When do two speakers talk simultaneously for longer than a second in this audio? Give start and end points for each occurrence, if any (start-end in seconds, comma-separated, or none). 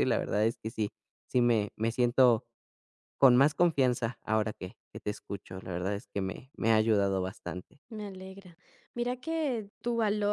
none